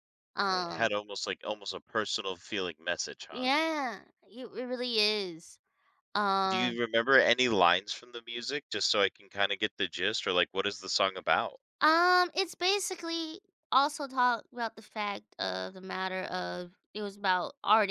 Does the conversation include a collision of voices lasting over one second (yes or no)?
no